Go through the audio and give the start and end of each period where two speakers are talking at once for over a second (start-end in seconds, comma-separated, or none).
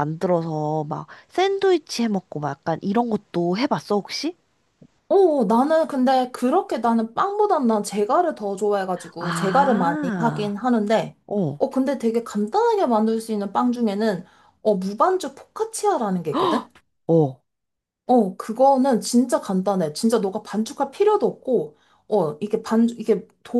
9.2-10.6